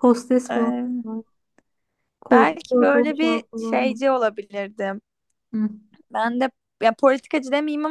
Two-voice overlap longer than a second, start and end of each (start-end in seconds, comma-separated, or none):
2.3-4.0